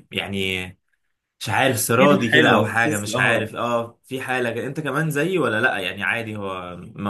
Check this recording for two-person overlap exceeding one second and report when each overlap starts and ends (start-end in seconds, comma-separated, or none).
2.0-3.5